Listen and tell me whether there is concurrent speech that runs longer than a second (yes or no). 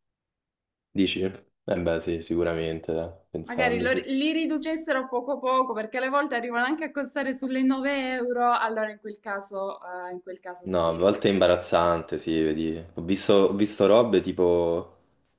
no